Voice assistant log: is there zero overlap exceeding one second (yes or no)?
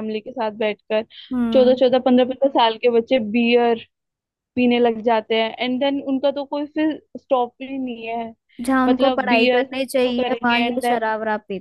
no